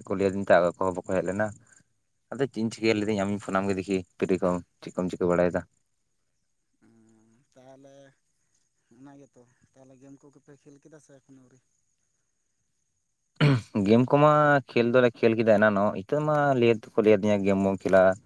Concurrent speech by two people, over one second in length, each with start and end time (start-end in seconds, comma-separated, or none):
none